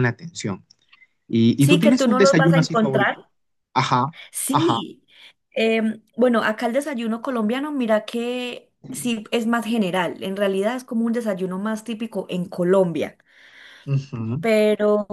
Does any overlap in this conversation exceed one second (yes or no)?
yes